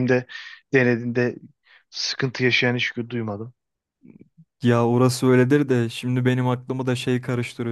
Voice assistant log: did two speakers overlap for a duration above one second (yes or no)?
no